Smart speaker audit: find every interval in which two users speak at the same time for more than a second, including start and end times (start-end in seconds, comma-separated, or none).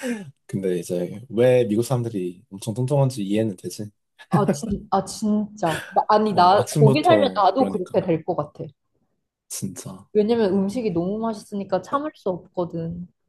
6.3-8.0